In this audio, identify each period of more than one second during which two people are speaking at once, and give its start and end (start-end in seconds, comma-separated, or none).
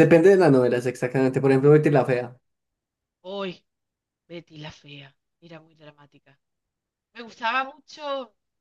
none